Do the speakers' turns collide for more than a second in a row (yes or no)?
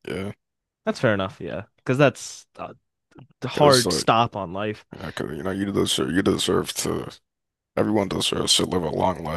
no